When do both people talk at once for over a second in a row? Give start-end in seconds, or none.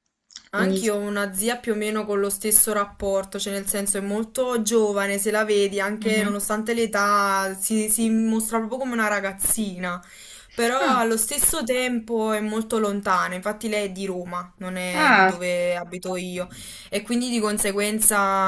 none